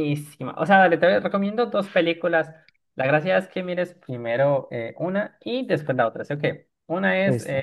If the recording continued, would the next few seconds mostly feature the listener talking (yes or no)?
no